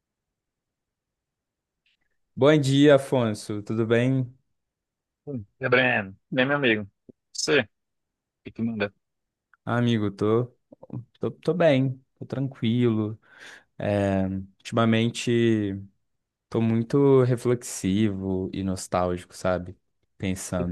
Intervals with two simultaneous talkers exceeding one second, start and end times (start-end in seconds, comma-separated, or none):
none